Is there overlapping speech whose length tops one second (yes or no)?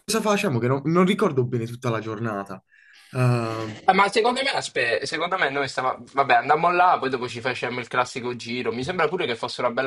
no